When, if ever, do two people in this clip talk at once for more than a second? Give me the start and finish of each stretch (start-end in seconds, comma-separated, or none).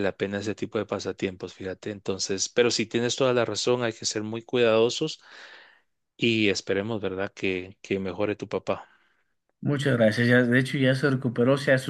none